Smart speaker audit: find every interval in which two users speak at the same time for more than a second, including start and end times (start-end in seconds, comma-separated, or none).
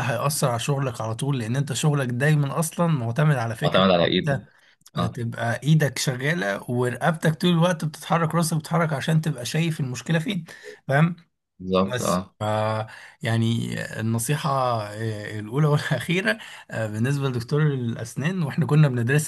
none